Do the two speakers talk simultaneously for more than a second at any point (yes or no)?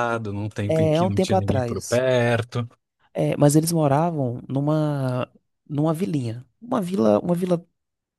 yes